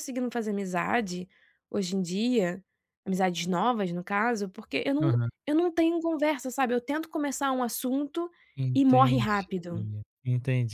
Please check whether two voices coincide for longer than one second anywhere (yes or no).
no